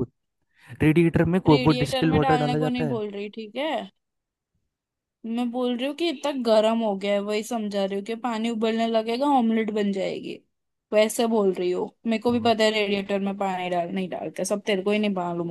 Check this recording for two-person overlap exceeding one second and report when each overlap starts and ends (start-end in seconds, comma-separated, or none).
1.5-3.0